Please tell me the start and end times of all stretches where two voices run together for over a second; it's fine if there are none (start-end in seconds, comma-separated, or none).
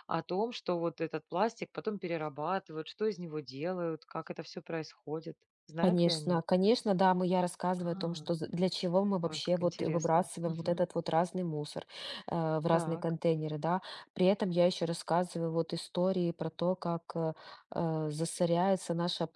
9.2-10.9